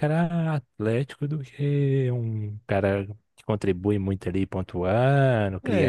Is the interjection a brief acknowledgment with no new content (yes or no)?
no